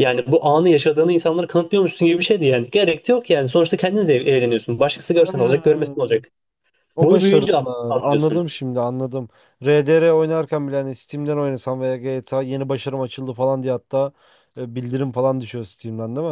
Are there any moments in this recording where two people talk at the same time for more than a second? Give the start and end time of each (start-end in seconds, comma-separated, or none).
7.0-8.4